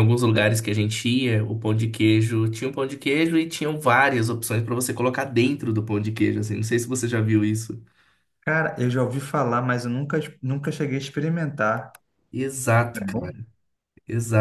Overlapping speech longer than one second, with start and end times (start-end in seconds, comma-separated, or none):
none